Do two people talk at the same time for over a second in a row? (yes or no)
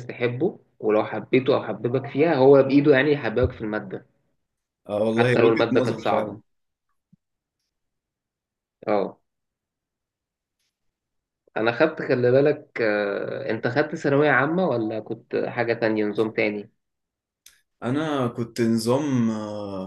yes